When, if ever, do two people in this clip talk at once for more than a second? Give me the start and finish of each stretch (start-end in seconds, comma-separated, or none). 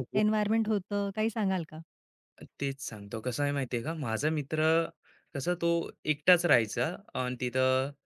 none